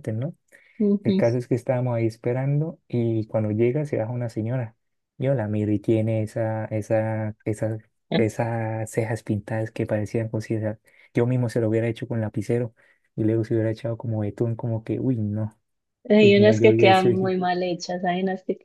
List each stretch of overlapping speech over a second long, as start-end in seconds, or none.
16.1-17.4